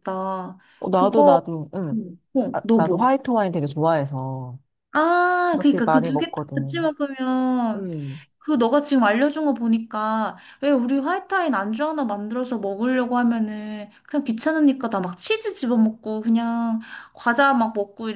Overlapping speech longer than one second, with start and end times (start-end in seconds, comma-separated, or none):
5.5-6.9